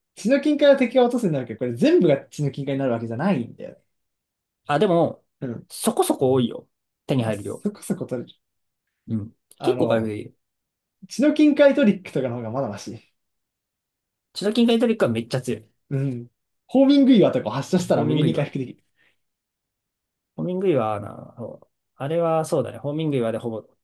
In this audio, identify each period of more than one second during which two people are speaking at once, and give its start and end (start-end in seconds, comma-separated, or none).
none